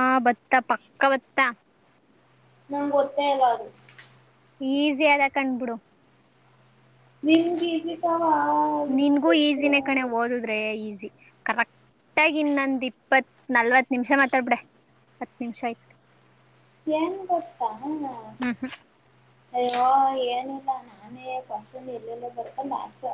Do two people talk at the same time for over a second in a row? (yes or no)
no